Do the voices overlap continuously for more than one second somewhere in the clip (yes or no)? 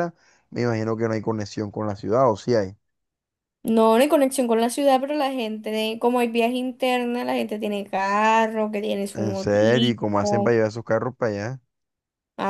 yes